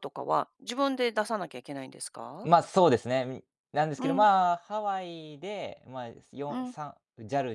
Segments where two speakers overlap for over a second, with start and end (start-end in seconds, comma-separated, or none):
none